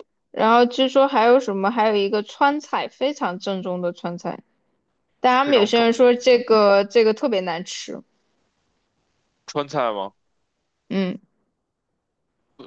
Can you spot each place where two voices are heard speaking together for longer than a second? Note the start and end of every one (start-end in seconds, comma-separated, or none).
5.4-6.8